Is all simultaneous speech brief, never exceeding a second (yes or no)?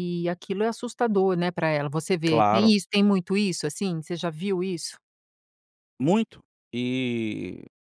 yes